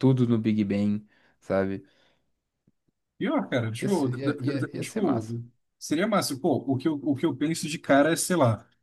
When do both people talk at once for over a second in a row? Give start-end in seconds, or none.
3.8-5.2